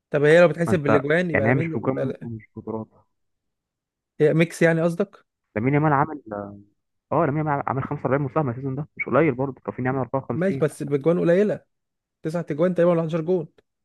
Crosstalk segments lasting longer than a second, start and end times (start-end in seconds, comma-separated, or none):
0.7-2.3